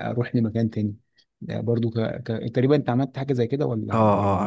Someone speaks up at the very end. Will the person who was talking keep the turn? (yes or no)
no